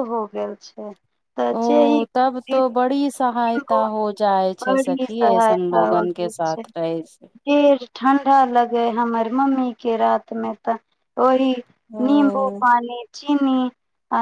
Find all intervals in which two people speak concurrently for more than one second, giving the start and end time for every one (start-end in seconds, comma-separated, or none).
4.6-6.6